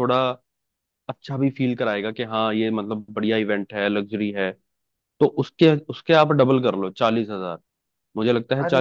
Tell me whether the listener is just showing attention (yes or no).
no